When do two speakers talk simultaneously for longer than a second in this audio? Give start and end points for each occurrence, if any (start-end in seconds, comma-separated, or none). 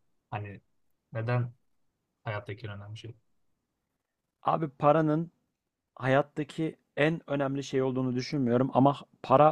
none